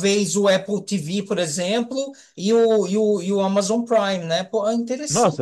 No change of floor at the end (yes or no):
no